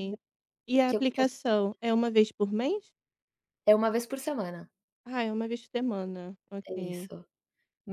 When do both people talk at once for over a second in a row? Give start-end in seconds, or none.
none